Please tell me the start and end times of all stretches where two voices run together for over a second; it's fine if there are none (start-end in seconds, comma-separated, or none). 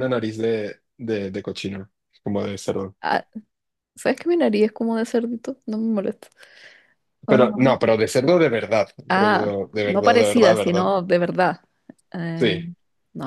9.1-10.9